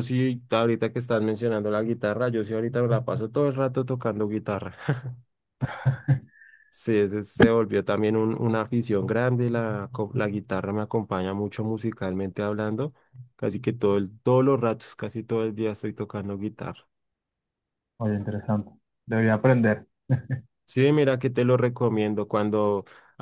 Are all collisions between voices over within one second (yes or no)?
yes